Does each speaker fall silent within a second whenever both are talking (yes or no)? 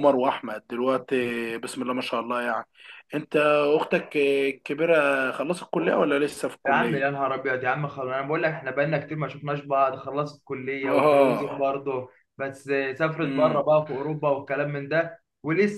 yes